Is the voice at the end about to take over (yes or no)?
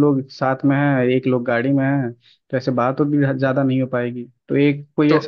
yes